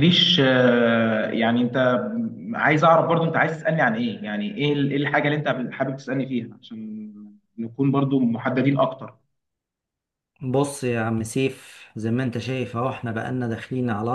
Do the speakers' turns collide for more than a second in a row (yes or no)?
no